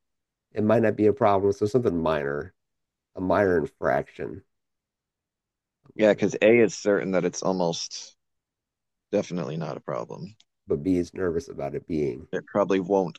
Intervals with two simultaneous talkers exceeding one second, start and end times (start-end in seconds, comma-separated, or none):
none